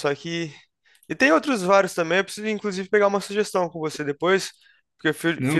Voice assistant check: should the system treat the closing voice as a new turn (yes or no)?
no